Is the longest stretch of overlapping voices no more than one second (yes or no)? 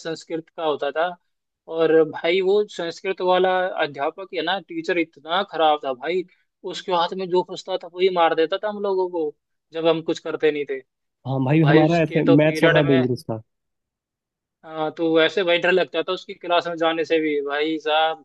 no